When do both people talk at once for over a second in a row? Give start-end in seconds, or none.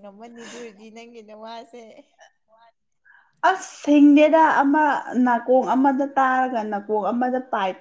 none